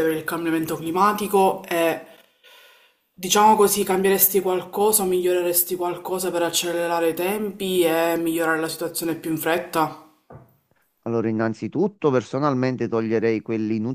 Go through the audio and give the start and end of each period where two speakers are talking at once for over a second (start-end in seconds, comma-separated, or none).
none